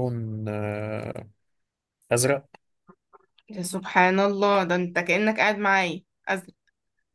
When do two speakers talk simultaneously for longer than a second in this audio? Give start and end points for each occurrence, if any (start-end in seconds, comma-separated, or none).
none